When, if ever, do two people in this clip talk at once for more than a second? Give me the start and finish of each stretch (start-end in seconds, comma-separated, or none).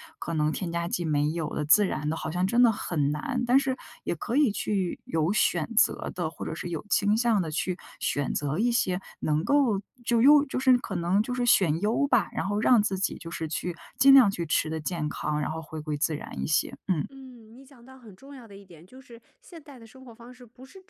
none